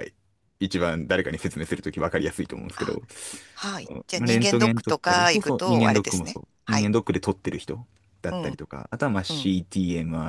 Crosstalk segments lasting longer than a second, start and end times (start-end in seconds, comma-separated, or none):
3.9-6.9